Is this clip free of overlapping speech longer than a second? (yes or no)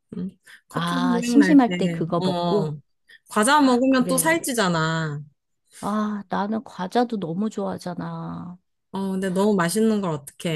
no